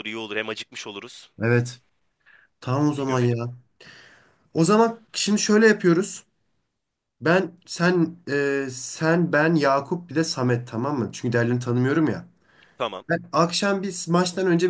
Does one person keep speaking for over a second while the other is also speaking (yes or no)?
no